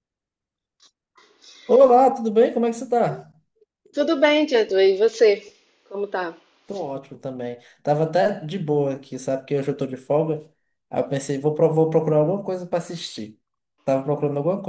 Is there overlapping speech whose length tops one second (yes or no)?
no